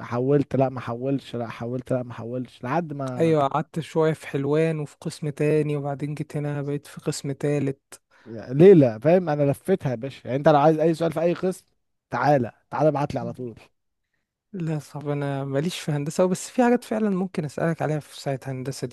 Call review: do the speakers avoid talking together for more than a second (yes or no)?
yes